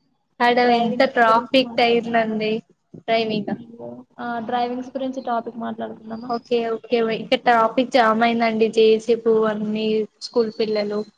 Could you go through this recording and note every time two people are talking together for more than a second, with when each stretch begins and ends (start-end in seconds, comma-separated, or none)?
0.7-2.3